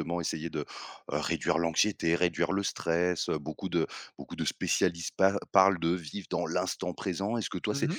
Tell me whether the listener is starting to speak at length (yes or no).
no